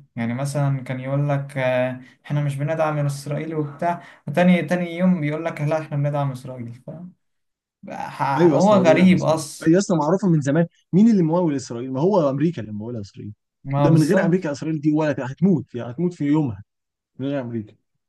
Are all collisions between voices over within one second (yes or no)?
no